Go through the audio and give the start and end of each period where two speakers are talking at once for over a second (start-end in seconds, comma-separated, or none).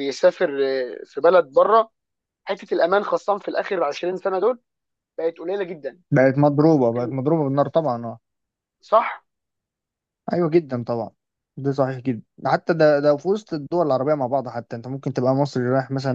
none